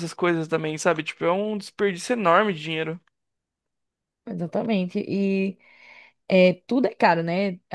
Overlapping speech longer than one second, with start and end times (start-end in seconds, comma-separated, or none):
none